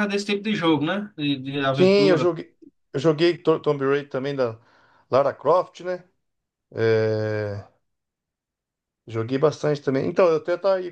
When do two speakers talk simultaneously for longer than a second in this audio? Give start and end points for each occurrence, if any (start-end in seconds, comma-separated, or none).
none